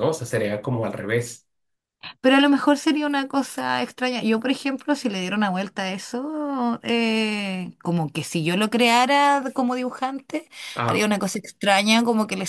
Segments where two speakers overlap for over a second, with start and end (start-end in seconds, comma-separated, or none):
none